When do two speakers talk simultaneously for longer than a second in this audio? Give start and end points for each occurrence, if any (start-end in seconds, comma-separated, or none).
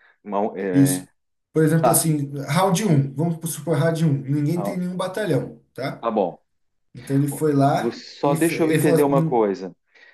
7.8-9.5